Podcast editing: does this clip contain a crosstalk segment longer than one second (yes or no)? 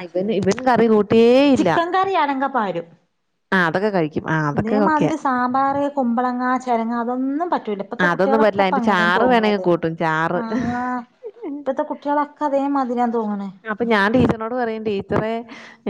yes